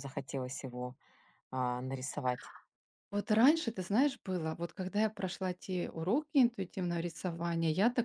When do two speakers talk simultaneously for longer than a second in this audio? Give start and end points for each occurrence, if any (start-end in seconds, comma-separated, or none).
none